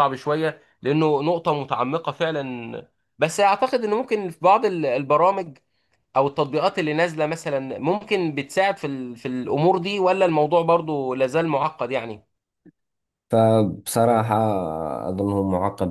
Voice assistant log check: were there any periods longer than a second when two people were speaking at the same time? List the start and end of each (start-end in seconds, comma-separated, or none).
none